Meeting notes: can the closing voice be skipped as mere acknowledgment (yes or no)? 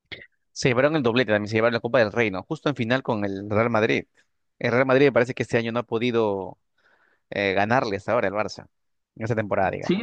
no